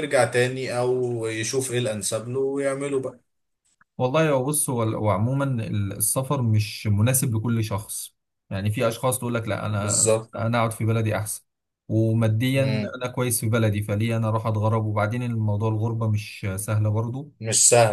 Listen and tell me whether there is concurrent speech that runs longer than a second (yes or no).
no